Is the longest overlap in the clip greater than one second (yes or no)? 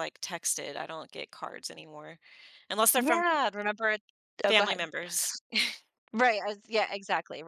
no